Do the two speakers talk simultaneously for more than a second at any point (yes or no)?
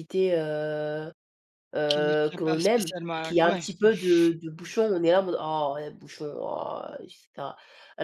yes